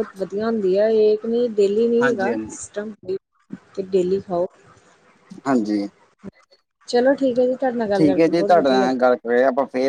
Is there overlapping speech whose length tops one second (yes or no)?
yes